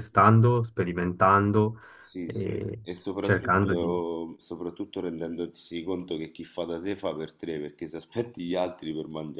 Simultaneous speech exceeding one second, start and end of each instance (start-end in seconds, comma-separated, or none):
2.2-3.9